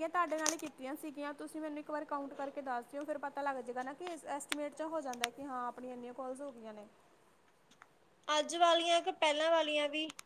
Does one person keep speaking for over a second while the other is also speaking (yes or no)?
no